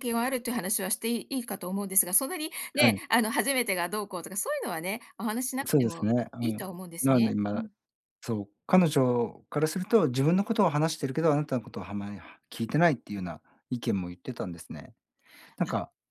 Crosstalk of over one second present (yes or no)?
yes